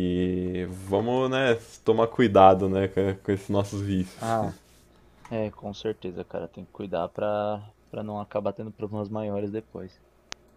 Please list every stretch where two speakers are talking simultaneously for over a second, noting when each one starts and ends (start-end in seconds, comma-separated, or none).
none